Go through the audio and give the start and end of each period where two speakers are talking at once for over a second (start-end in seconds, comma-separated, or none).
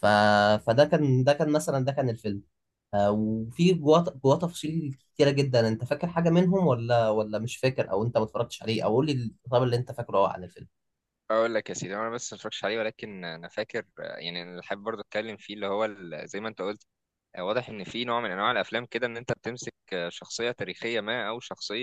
none